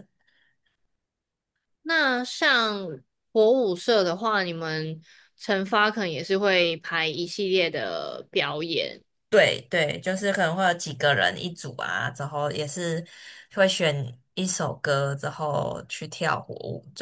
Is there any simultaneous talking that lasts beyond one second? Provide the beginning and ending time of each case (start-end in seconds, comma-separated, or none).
none